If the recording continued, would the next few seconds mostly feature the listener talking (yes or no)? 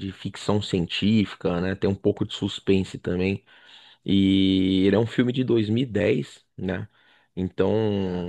no